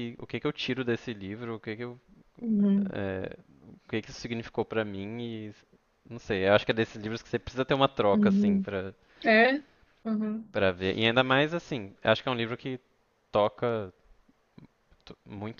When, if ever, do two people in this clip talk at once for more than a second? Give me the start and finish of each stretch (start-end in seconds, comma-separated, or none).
none